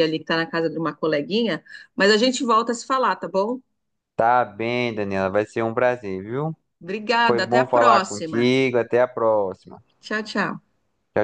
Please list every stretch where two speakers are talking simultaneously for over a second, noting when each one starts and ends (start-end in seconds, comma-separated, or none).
7.3-8.5